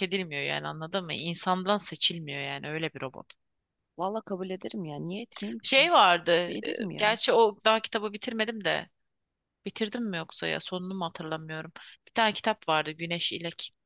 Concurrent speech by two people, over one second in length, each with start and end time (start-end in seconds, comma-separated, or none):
none